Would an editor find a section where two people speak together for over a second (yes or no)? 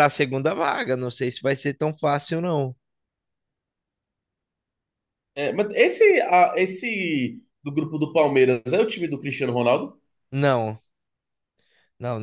no